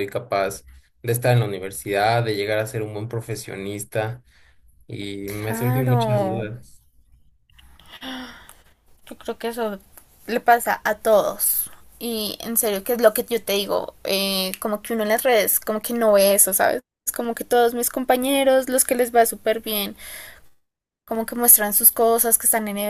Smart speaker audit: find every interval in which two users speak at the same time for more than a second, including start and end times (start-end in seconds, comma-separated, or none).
5.2-6.5